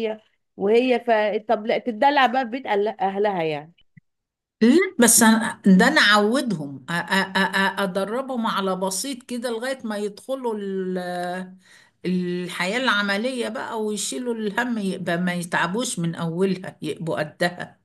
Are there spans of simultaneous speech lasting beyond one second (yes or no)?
no